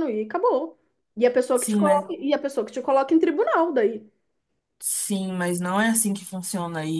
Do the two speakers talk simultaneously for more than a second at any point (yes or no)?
no